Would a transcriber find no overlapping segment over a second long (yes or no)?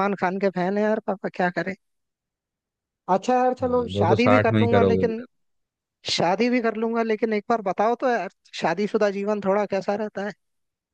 no